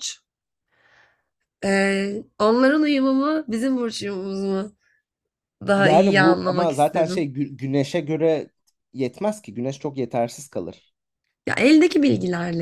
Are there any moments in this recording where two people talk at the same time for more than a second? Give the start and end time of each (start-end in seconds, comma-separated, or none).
5.8-7.3